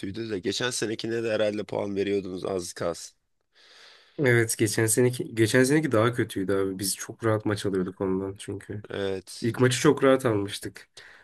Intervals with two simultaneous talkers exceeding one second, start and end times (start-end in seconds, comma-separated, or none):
none